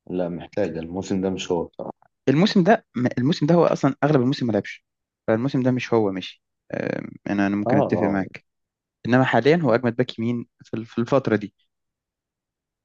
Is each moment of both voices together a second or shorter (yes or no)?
yes